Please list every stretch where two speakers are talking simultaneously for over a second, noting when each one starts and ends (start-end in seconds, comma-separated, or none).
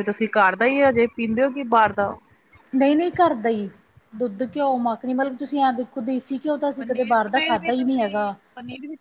6.8-8.3